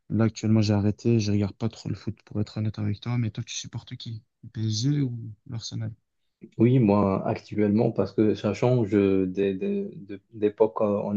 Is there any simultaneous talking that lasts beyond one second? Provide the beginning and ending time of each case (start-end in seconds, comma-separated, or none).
none